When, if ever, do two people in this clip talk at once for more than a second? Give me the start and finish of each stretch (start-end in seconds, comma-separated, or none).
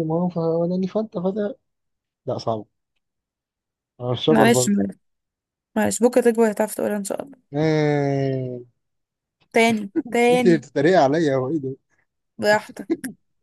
none